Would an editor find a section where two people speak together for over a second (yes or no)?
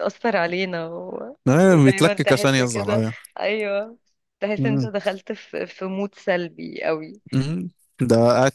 yes